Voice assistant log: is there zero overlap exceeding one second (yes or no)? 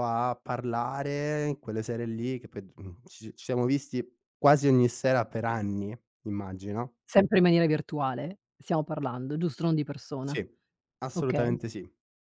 yes